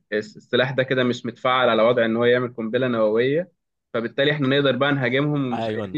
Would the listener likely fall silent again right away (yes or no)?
yes